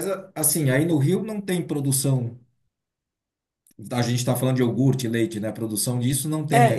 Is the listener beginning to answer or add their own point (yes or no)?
yes